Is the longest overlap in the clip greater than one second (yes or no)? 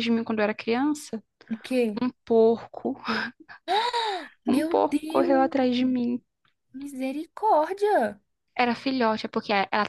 yes